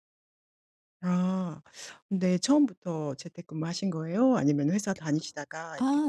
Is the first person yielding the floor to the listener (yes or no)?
yes